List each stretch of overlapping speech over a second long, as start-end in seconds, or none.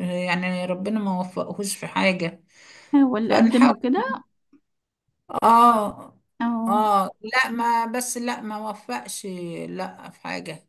none